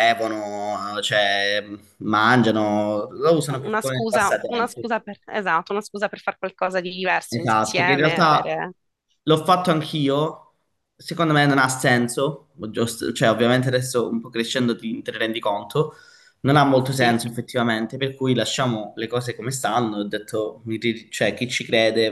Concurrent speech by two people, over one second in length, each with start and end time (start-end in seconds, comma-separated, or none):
3.5-4.8, 7.3-8.6